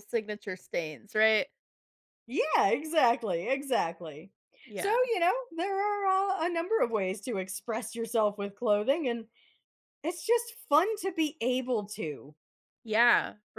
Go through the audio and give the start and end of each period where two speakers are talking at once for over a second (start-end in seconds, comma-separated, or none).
none